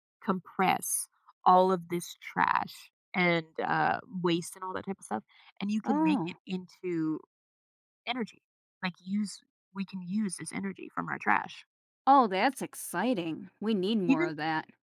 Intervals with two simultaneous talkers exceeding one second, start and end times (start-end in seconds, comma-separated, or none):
none